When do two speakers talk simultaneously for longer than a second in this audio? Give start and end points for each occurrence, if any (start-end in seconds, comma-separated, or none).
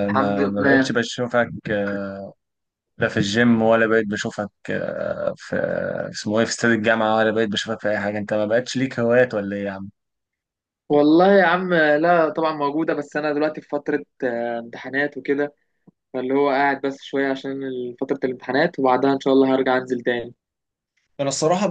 none